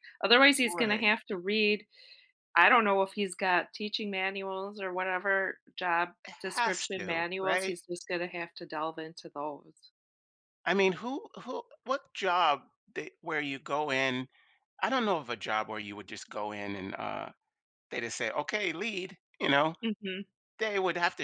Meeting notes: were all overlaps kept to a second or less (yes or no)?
no